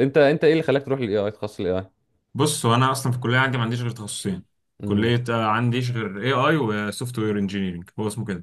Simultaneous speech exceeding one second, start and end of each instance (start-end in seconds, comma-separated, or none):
none